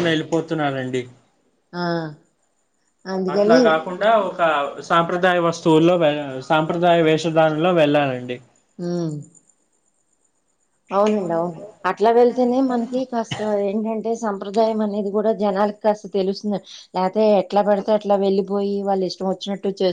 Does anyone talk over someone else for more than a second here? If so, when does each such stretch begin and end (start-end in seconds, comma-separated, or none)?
none